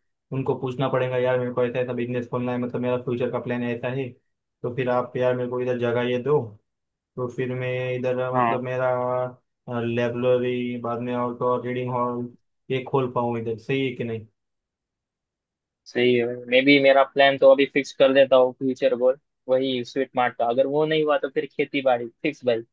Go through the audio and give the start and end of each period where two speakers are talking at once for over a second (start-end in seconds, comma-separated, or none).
none